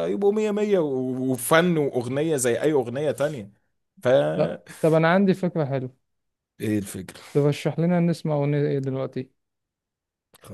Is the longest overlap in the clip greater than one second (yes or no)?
no